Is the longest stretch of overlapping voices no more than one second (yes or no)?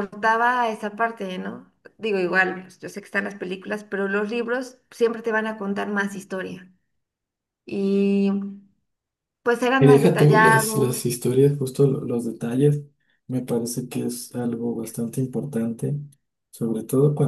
no